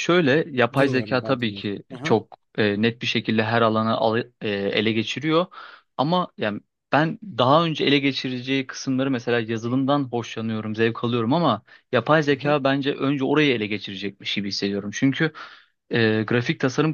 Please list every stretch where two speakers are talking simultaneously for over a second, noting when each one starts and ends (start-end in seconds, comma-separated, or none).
0.8-2.2